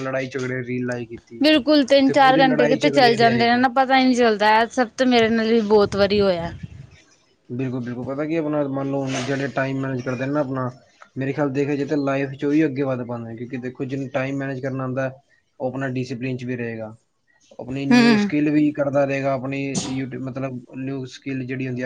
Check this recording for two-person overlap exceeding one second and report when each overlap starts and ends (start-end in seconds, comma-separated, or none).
2.0-3.6